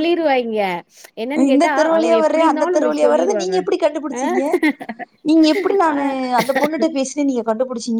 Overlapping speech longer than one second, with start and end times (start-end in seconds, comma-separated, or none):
1.5-3.5